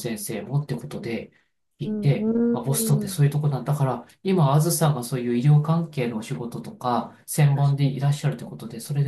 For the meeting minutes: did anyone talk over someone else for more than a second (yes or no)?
yes